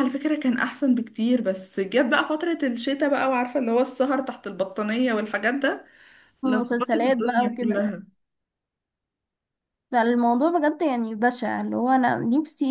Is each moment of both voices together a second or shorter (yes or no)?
no